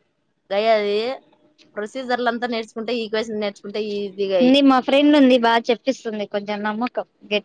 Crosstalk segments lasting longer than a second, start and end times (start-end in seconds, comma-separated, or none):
none